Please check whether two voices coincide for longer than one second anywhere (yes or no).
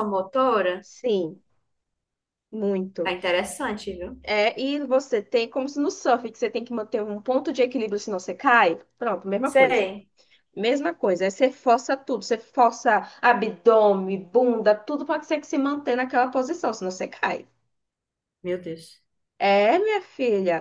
no